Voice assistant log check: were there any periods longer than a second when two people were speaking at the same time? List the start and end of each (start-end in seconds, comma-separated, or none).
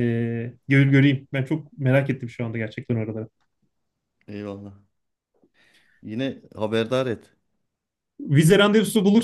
none